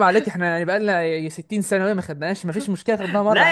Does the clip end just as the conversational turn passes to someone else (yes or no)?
yes